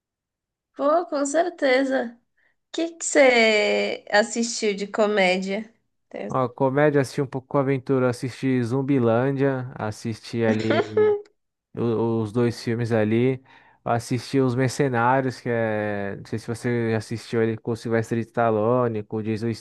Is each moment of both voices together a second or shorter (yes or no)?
yes